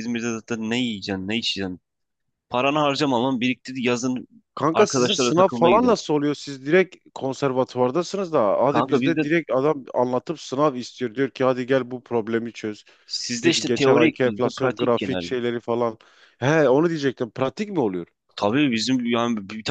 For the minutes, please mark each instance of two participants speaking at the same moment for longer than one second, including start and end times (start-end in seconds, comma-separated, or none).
4.7-6.0, 13.4-15.3